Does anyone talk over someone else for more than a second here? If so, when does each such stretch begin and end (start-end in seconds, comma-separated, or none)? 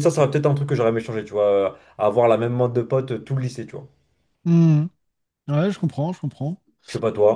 none